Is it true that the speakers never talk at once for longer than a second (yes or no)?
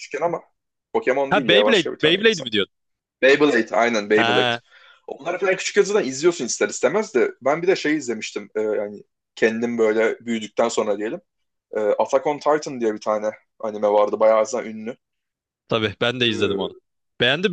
no